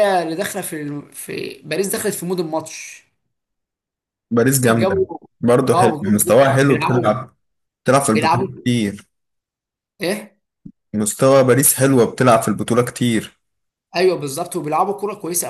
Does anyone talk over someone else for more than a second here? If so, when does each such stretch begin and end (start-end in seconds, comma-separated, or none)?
5.7-7.2